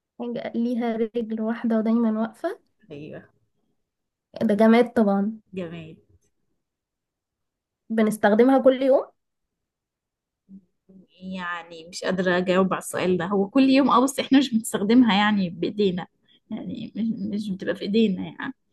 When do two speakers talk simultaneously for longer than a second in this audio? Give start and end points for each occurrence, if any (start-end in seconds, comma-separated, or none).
none